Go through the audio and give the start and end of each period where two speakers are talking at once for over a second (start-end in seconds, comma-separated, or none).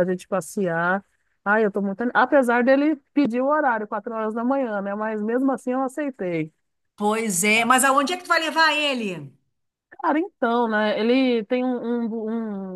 none